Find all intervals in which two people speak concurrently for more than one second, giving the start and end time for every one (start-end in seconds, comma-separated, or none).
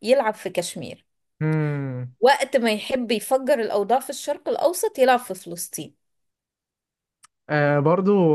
none